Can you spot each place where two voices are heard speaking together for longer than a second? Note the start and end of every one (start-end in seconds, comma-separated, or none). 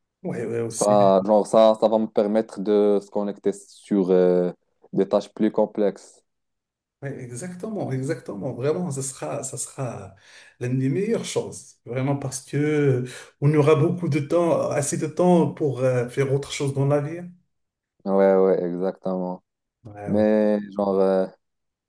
none